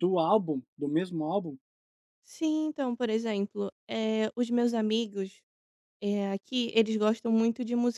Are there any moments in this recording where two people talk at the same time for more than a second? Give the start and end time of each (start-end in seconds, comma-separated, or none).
none